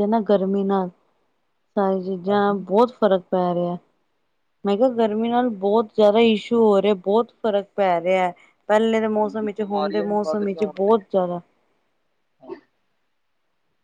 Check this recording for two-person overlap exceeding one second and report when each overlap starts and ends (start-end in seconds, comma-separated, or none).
9.6-10.9